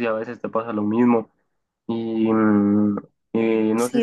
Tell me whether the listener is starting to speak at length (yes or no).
yes